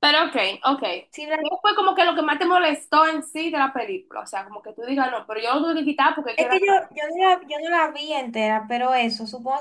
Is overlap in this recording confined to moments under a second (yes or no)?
yes